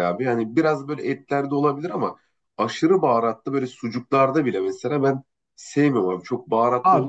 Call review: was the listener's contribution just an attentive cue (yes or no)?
no